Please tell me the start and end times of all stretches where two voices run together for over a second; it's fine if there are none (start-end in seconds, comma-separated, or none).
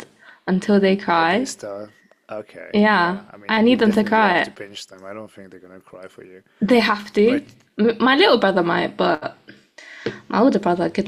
2.7-4.5